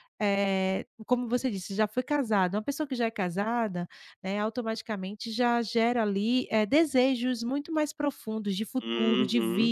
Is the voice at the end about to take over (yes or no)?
yes